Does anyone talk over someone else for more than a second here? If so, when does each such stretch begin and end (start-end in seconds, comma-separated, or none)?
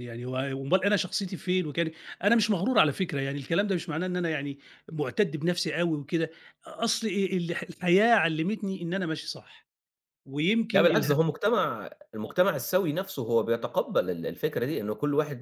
none